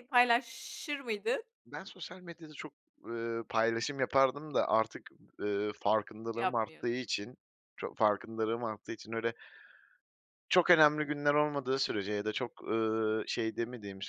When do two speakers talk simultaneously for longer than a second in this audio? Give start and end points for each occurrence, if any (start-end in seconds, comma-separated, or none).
none